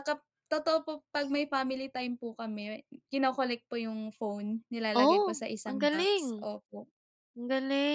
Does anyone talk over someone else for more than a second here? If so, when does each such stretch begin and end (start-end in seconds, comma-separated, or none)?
5.0-6.5